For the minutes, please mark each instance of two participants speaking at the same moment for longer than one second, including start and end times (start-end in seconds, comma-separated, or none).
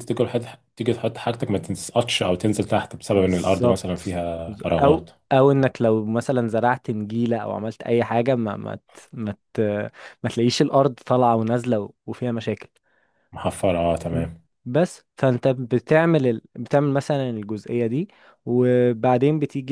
3.1-5.1